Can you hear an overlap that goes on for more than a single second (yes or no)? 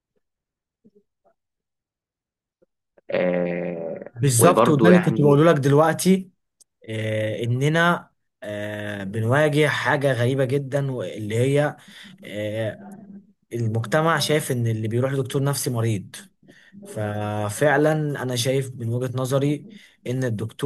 yes